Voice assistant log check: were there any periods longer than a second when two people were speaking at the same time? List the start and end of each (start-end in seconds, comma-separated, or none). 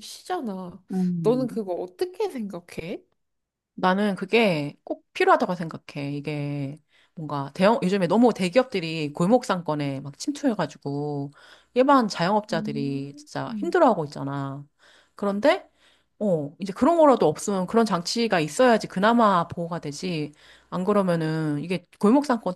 12.5-13.8